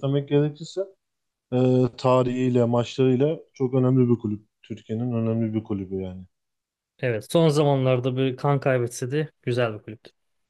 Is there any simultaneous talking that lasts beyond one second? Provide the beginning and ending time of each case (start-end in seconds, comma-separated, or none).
none